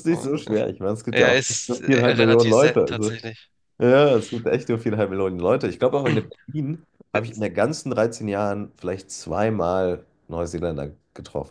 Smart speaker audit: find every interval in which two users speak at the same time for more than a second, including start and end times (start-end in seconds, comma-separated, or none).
1.1-3.1